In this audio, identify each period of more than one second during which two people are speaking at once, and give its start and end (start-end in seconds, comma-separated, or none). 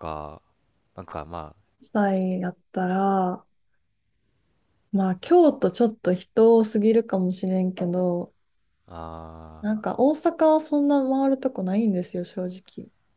none